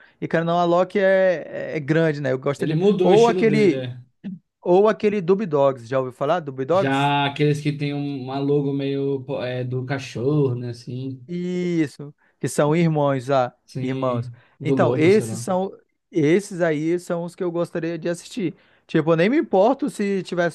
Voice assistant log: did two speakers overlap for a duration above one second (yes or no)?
yes